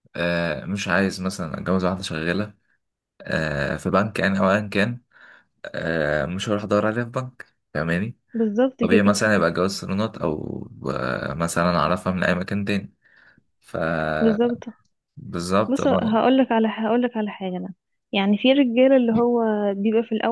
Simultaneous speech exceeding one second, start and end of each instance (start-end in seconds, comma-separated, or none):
none